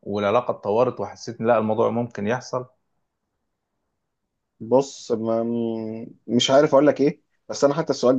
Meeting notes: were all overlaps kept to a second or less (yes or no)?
yes